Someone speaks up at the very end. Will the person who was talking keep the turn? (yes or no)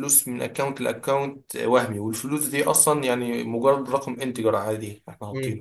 no